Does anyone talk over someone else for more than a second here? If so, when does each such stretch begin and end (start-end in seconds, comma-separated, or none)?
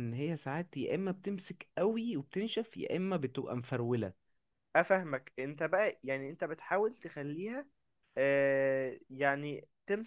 none